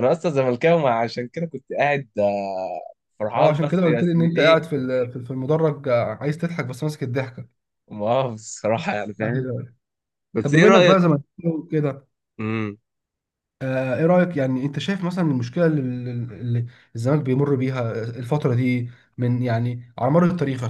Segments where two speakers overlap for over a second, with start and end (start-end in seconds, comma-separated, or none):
3.4-4.6